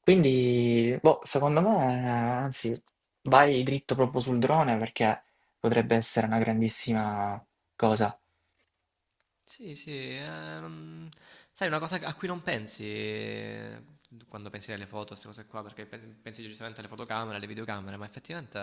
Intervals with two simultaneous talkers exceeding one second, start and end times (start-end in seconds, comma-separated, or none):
none